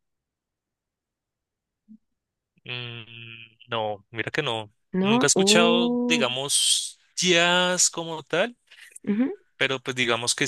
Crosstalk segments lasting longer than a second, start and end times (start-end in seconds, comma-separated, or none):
4.9-6.3